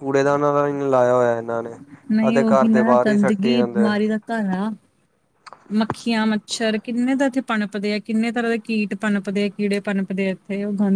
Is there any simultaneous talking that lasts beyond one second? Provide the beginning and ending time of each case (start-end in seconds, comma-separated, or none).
2.3-3.9